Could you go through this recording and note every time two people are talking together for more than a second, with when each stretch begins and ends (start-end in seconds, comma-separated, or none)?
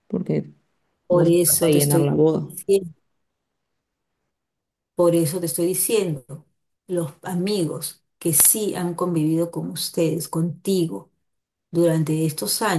1.1-2.5